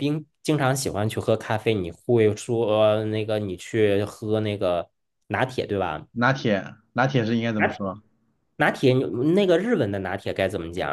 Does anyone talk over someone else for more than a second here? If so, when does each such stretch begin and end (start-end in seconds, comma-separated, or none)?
none